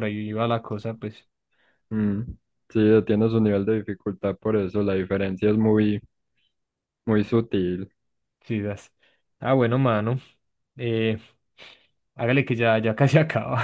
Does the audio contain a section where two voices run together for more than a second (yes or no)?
no